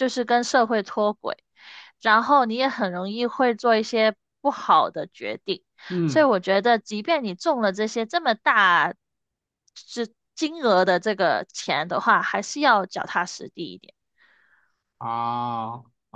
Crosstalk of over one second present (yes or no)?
no